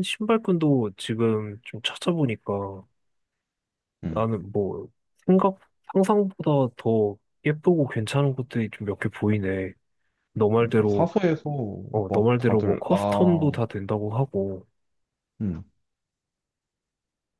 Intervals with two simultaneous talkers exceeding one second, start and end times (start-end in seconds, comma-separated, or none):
12.1-13.6